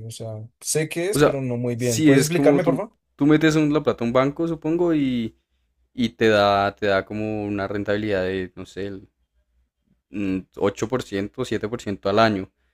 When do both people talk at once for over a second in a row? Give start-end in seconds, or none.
1.1-3.0